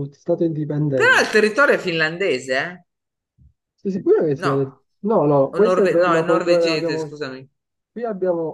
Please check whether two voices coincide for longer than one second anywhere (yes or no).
yes